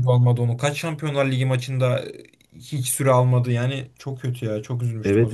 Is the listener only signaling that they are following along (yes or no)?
no